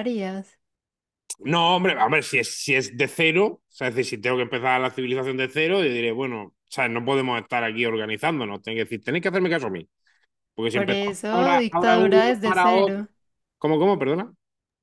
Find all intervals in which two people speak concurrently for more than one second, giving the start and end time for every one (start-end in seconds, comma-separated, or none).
10.7-13.0